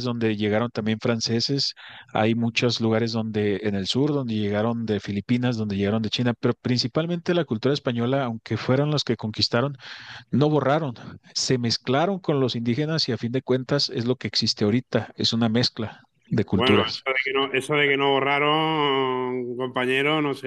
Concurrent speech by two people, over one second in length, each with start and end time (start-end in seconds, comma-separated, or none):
none